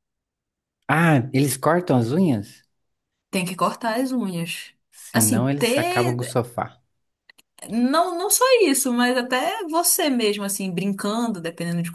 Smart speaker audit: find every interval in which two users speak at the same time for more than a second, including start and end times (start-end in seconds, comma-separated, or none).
5.1-6.4